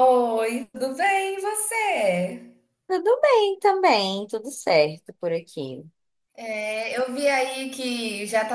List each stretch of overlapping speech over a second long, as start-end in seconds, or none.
none